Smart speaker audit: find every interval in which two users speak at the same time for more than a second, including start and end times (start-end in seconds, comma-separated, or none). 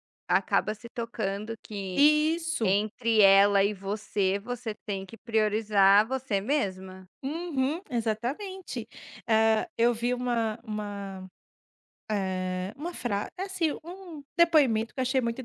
none